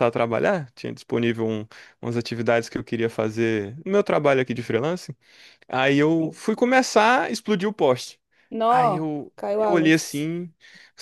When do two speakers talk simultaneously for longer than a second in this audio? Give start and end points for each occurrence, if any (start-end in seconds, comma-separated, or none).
8.7-10.3